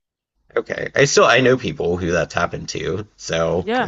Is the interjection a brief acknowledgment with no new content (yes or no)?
no